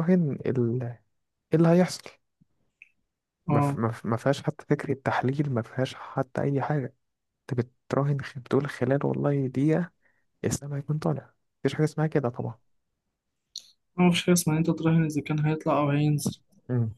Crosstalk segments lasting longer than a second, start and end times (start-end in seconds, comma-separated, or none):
none